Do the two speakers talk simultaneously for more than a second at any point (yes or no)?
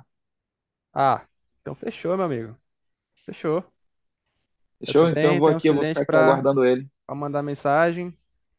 yes